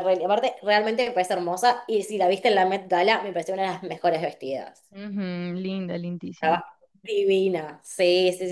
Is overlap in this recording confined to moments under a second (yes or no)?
yes